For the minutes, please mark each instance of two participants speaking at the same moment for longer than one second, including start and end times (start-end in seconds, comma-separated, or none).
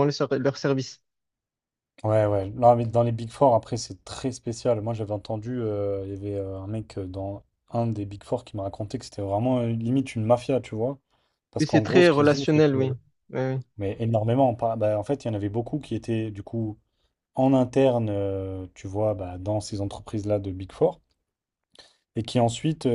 11.6-12.9